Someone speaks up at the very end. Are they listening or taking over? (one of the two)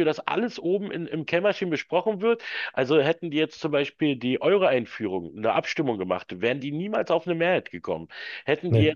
listening